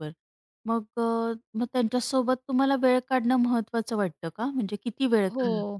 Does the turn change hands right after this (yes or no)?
yes